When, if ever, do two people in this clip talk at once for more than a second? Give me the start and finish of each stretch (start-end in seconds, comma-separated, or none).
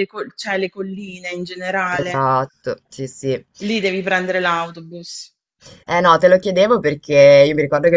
none